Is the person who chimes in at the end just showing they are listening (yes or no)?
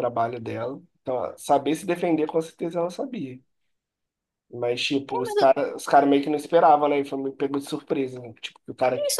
no